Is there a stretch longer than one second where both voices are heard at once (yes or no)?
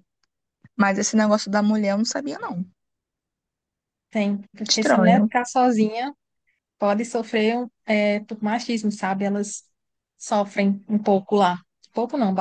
no